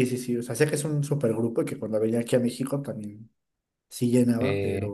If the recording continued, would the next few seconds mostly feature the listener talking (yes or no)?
yes